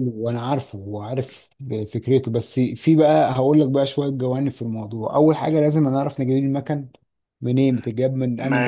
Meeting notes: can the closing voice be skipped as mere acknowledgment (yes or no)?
no